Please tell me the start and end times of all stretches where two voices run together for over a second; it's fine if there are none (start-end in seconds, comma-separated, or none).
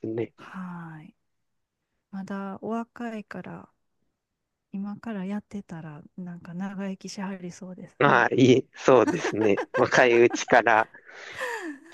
none